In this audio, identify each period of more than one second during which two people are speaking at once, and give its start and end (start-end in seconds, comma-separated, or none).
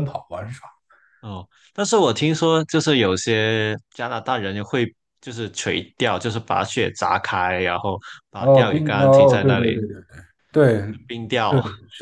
8.4-9.8